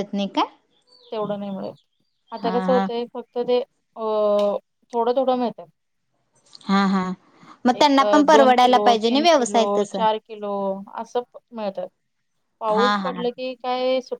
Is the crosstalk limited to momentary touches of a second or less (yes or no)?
no